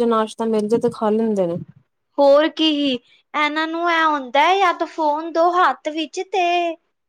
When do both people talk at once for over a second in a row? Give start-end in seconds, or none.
none